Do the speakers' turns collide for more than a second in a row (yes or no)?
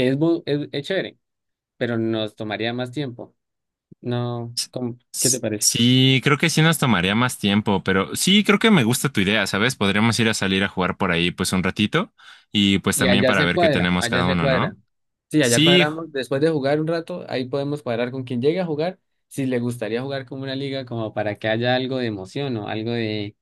yes